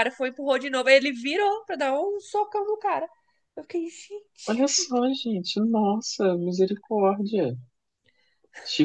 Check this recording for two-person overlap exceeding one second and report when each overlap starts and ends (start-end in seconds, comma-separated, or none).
none